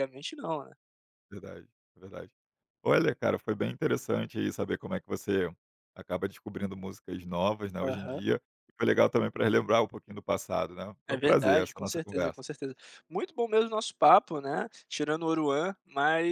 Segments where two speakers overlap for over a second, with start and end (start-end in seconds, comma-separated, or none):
11.1-12.4